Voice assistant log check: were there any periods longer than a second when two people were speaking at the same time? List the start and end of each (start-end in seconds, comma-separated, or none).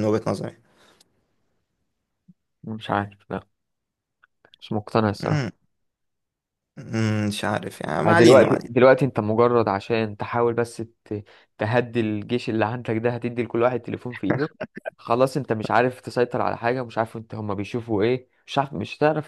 none